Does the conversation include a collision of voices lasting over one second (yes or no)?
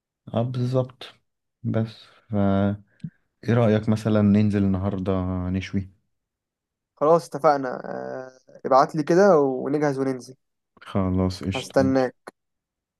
no